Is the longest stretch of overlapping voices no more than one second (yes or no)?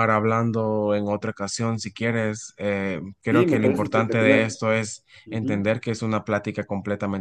no